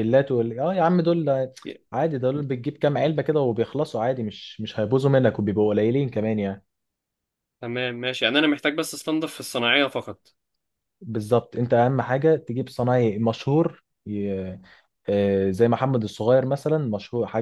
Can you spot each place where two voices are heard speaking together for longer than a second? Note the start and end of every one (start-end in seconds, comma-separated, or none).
none